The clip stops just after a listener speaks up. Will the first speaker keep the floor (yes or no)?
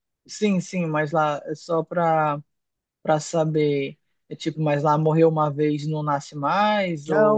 no